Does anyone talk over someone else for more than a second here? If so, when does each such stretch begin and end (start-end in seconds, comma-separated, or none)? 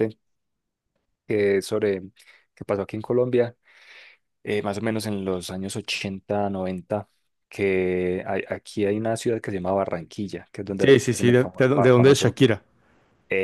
10.8-12.3